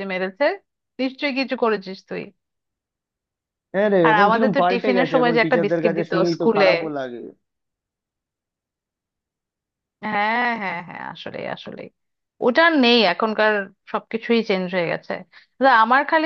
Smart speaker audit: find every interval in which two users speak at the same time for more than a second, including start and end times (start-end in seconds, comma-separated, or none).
4.1-6.7